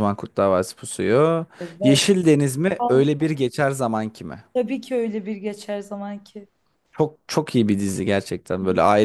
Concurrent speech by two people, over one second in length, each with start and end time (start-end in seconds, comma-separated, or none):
none